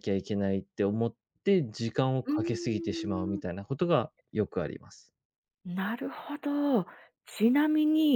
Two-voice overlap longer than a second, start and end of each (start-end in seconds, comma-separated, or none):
2.2-3.5